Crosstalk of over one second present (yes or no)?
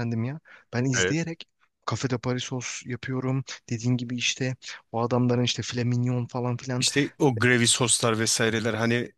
no